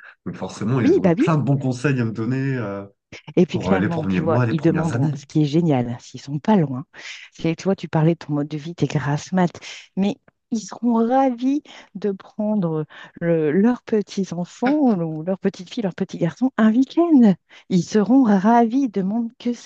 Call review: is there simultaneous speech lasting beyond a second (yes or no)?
yes